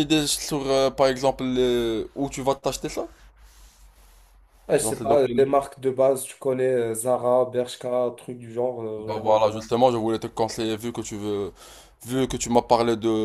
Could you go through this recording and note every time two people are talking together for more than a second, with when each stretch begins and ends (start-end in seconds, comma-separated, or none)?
none